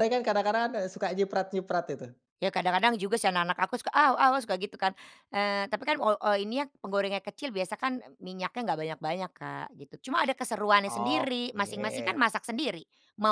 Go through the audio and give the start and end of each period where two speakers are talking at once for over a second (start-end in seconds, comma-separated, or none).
10.9-12.2